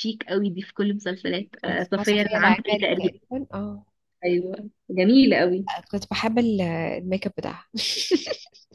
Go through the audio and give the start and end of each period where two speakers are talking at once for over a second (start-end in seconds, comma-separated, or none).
1.6-3.1